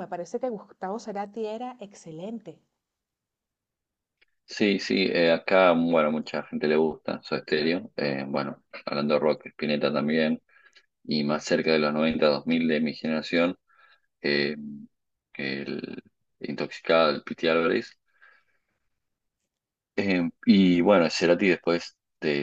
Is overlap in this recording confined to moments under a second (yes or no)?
yes